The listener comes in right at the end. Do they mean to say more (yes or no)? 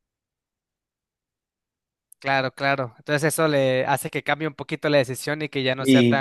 yes